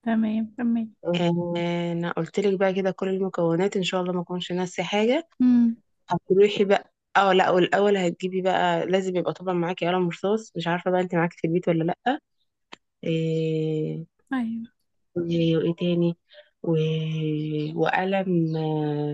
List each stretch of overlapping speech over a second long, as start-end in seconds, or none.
none